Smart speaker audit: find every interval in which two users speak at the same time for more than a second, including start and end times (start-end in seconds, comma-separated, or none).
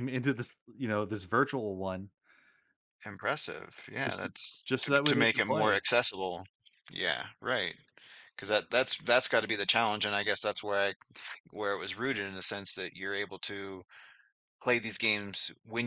4.0-5.8